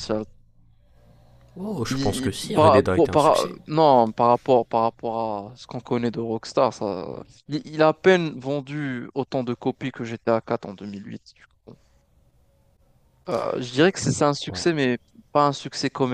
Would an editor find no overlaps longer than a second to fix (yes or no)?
no